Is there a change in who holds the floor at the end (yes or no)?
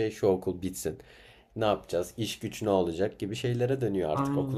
yes